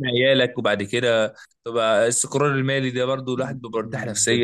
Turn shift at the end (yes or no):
yes